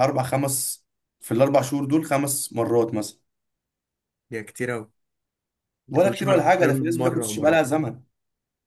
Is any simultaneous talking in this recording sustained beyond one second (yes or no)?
yes